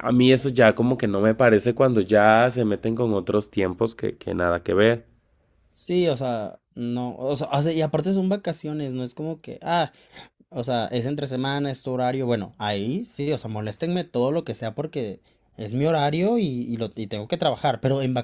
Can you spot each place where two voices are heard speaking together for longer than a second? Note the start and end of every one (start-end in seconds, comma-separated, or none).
none